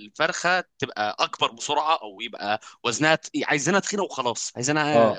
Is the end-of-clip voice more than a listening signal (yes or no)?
no